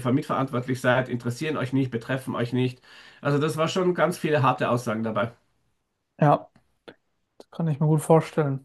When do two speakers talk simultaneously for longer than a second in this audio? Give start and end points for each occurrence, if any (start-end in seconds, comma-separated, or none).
none